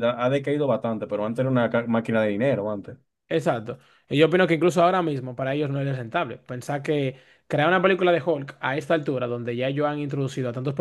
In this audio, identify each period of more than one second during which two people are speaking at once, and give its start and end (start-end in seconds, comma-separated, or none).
none